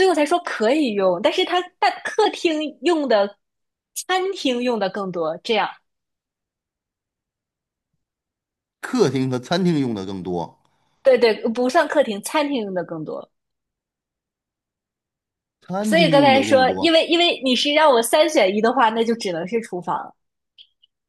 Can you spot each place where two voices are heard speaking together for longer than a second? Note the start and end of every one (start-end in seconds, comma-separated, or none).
15.8-17.0